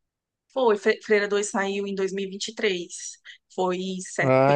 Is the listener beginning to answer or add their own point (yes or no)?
no